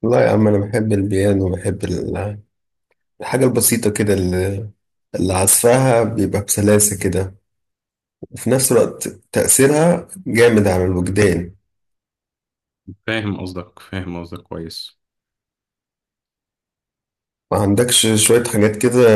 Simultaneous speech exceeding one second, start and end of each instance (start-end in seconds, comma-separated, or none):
none